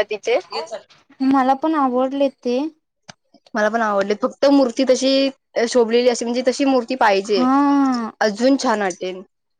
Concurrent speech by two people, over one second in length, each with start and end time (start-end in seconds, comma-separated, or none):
none